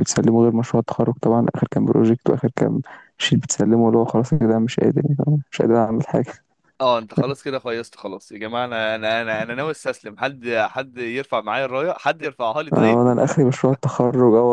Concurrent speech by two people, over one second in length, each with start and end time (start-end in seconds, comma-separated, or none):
none